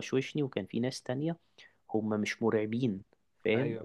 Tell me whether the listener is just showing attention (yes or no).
yes